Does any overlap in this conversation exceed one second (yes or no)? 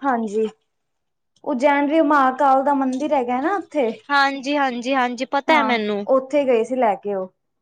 no